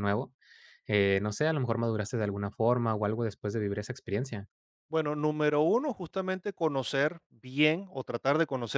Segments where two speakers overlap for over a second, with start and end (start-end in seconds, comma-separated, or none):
none